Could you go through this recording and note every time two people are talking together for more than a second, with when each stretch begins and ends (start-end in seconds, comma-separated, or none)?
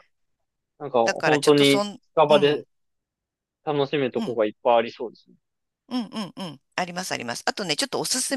1.0-2.6